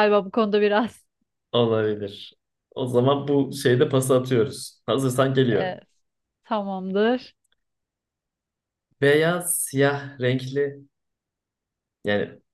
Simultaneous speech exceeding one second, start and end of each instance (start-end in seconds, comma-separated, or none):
none